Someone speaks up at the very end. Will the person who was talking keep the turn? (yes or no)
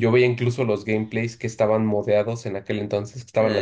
yes